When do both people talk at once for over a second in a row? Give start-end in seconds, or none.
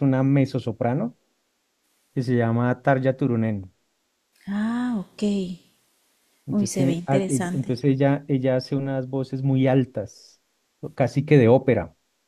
6.5-7.7